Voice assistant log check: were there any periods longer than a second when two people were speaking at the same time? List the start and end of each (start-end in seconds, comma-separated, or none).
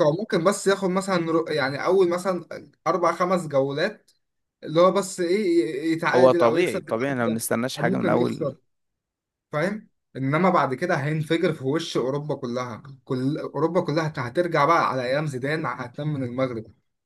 6.1-8.6